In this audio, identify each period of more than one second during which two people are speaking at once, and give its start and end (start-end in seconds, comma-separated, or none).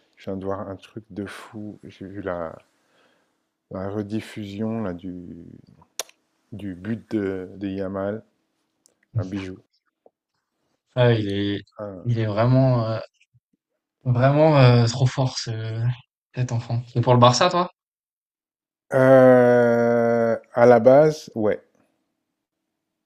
none